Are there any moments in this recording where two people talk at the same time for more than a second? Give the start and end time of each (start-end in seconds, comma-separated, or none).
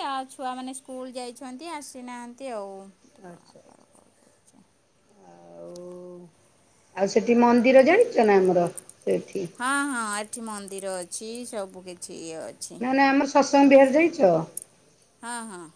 none